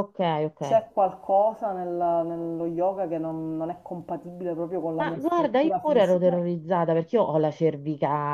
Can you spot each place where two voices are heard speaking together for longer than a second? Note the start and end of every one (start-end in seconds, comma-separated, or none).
5.0-6.3